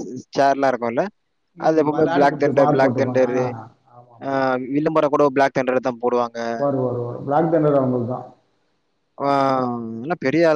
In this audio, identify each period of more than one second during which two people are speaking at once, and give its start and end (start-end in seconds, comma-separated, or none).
1.7-3.3